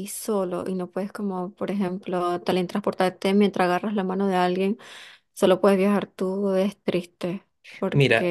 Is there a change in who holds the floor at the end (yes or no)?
yes